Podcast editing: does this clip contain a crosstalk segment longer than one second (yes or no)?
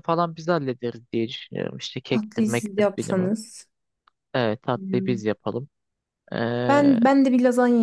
yes